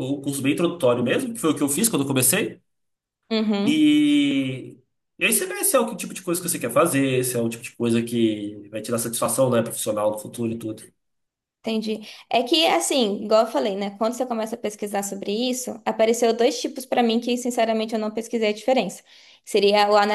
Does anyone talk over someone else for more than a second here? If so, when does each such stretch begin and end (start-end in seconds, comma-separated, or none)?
none